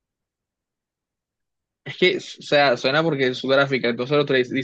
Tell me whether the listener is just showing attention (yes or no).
yes